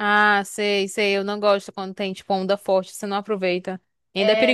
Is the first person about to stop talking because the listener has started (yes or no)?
yes